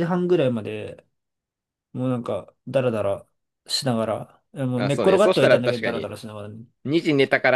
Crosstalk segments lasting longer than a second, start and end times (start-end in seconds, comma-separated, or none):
4.8-6.1